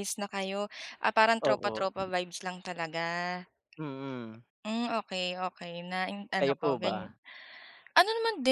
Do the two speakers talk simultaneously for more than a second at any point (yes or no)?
no